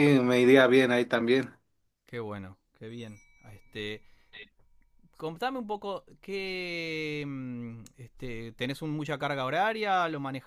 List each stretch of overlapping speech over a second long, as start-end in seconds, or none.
none